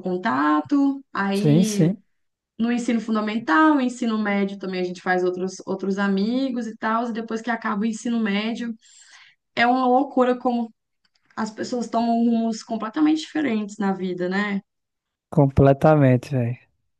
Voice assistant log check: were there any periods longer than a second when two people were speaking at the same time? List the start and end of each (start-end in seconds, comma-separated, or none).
none